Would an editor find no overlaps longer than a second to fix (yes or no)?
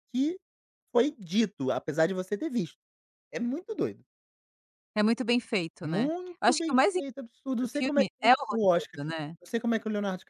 no